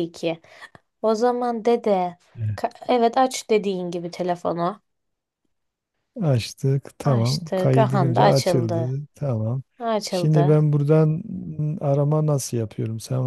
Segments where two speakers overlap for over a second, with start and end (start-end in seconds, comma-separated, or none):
7.0-9.0